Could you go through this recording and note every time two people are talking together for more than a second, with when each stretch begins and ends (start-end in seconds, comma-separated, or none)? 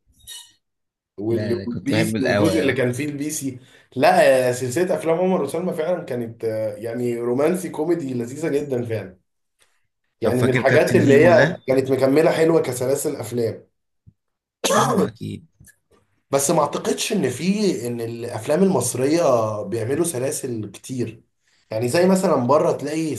1.3-2.8, 10.2-11.6